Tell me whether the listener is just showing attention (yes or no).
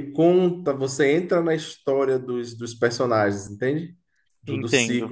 yes